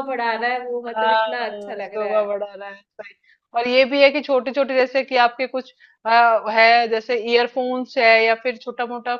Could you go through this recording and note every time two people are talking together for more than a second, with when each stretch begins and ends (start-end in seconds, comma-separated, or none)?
0.9-2.4